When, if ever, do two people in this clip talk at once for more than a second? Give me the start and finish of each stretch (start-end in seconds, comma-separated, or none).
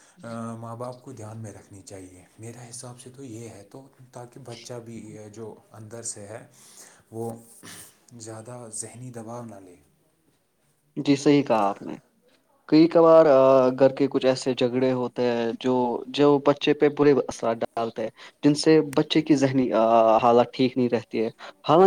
none